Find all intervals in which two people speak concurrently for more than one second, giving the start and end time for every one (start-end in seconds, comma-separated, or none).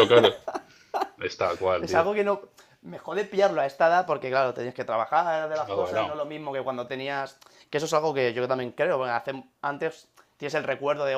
none